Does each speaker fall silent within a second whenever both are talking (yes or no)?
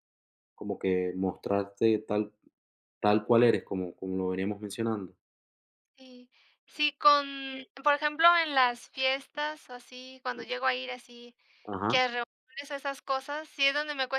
yes